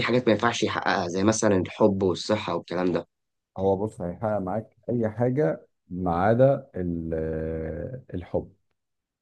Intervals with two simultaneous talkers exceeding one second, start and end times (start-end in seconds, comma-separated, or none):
none